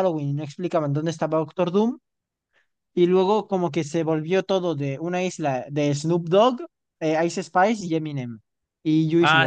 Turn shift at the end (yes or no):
yes